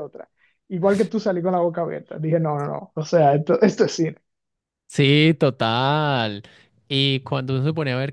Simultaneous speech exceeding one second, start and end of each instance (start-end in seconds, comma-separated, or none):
none